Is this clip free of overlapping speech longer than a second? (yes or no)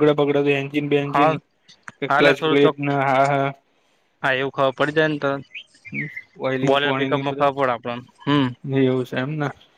no